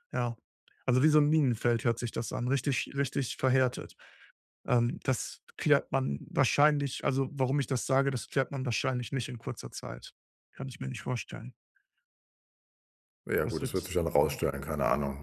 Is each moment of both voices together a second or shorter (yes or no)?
yes